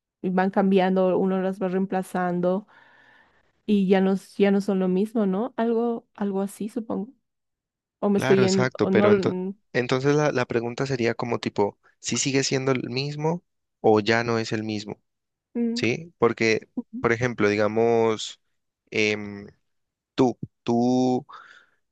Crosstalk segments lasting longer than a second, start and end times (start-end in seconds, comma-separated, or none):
8.1-9.4